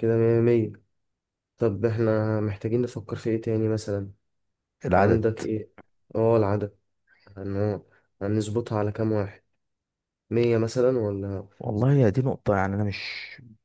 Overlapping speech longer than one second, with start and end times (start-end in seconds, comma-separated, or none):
none